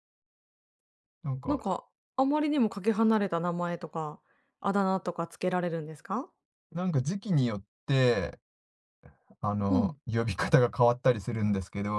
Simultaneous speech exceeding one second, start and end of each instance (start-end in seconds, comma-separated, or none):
none